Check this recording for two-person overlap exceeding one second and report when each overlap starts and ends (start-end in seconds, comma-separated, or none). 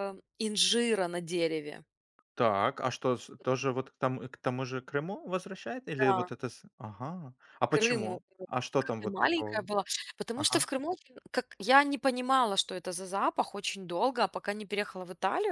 7.7-9.7